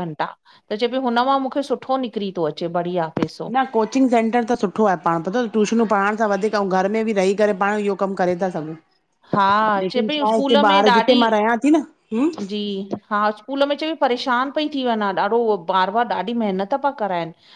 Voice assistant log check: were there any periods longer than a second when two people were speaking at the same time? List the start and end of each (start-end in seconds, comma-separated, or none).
9.8-11.3